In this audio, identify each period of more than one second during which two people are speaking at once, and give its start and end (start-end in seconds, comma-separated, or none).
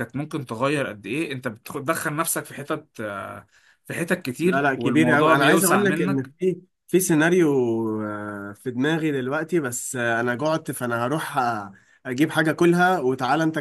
4.4-6.3